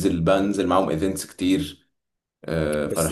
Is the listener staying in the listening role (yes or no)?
no